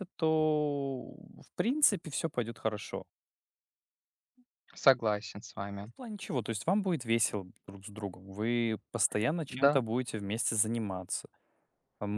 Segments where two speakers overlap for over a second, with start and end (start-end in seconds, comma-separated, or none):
none